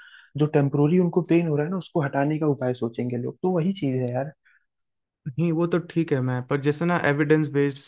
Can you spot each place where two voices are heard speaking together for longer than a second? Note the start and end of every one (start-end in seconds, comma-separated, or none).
none